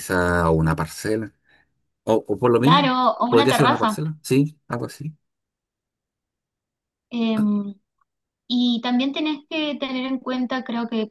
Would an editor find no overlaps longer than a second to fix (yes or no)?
no